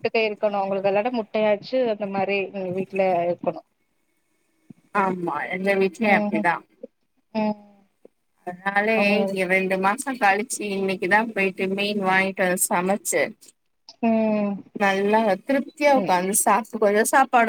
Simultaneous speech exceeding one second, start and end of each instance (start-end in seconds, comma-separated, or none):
none